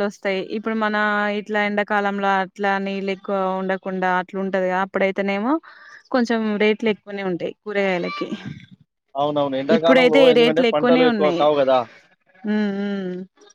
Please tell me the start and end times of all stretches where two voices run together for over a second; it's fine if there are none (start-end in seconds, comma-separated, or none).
9.8-11.4